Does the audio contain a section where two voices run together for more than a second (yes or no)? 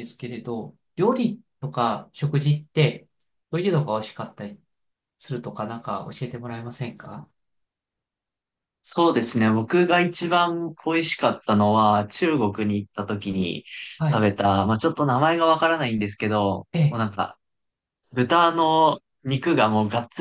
no